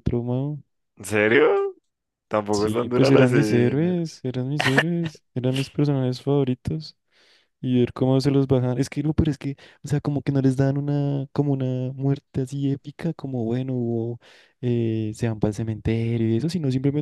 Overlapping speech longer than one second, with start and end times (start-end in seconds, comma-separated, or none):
2.5-3.9